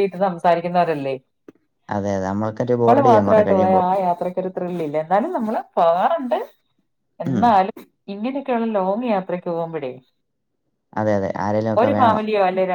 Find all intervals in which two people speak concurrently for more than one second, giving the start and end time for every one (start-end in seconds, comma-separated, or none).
1.9-3.8